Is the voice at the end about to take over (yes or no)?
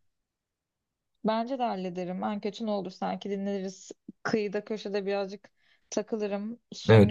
yes